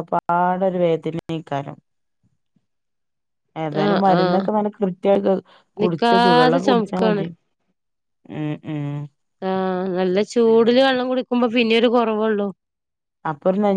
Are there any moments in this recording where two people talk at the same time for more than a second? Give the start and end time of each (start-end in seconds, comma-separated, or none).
5.8-7.2